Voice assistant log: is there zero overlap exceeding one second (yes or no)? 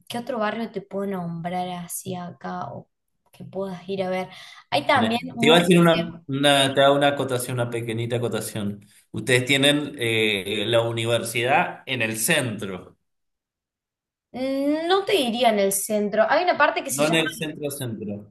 no